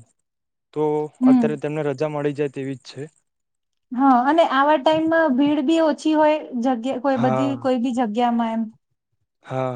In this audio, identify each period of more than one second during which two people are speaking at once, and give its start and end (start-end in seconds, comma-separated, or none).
none